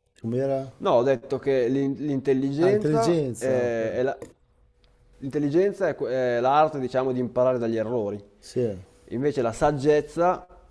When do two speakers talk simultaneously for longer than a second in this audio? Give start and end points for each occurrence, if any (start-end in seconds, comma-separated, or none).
2.6-3.9